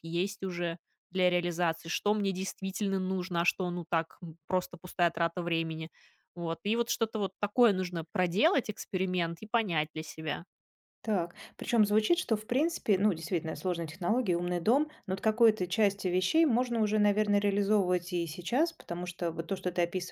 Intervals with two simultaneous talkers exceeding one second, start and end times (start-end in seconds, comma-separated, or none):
none